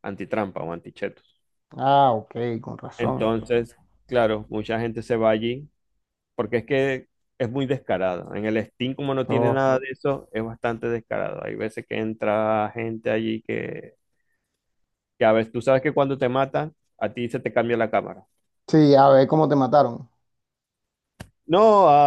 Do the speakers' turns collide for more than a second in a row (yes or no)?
no